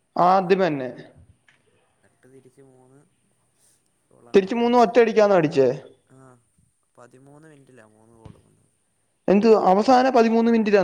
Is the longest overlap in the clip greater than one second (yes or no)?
no